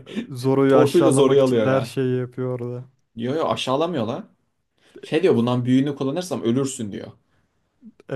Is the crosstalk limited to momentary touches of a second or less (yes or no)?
no